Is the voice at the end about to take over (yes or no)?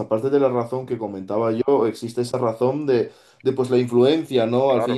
no